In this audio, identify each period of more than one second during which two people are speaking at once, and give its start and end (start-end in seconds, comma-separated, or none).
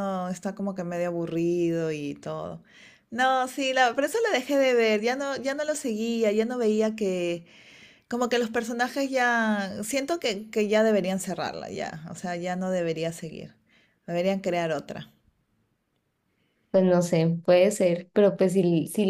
none